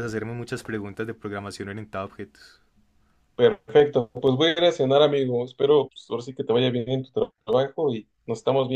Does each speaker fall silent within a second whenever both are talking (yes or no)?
yes